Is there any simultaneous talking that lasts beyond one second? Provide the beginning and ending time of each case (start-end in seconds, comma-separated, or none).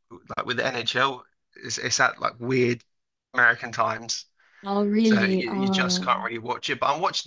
5.0-6.3